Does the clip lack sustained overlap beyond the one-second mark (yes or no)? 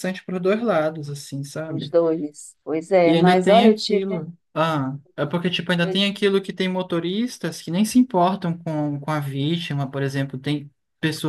no